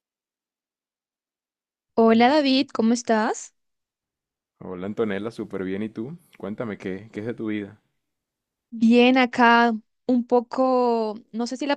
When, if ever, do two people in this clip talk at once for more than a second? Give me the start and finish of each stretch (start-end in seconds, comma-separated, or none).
none